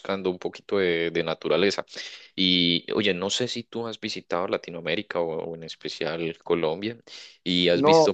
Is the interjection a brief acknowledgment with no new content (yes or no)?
yes